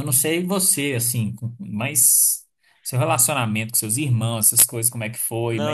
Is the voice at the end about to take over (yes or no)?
yes